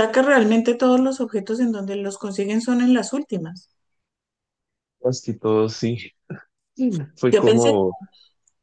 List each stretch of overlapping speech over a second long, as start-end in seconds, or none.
none